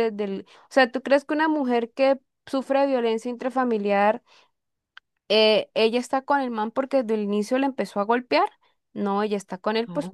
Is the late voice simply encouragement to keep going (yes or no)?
yes